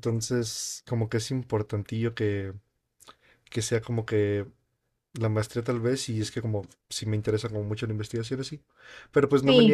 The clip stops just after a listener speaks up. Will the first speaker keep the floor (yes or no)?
yes